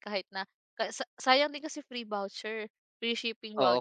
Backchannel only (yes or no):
no